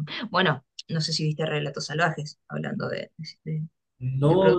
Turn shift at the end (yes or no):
yes